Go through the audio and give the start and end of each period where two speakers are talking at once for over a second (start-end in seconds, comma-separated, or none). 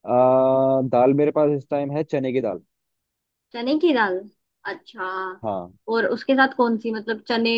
none